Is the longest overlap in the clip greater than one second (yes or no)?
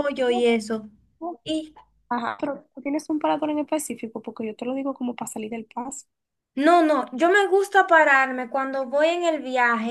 no